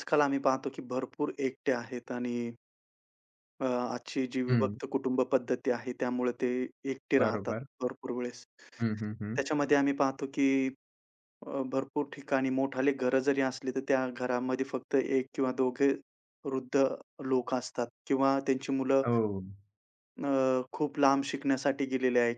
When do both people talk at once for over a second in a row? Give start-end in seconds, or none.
none